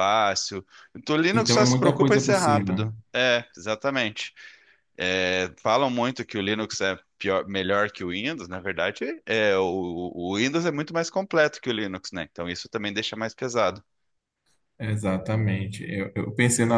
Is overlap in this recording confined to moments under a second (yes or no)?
no